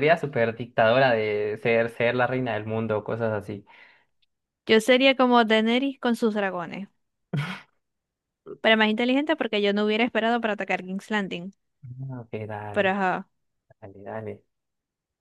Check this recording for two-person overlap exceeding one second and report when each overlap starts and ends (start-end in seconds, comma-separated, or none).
none